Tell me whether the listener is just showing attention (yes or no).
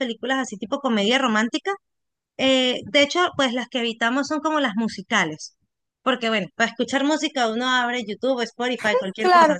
no